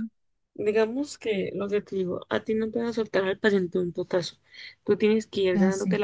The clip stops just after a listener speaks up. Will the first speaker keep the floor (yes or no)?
yes